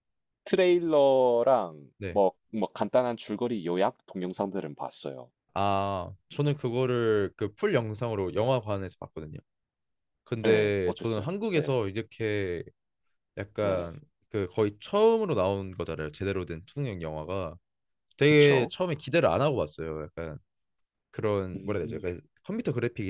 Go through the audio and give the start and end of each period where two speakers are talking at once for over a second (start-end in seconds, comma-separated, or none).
10.4-11.8